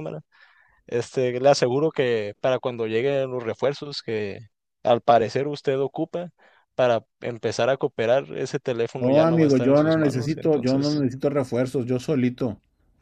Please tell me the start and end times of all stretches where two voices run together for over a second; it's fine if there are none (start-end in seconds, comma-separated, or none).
8.9-11.0